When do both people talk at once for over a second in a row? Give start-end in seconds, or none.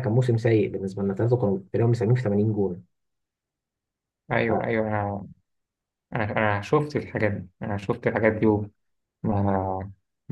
none